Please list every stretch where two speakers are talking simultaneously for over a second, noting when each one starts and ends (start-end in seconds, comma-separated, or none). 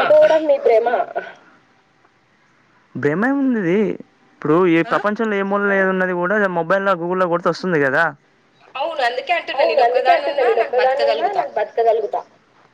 none